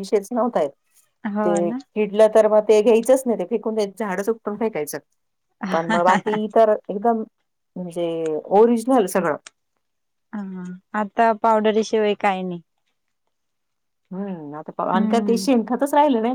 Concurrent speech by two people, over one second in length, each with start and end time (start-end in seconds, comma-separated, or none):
none